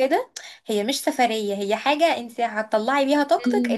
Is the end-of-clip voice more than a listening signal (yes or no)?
no